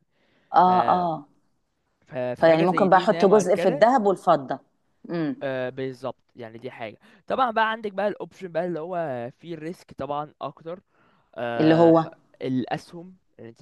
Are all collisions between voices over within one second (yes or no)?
no